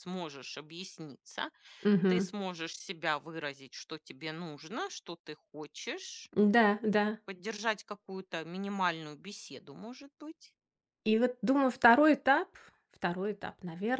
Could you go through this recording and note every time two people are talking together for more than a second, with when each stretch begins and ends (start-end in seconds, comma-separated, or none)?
none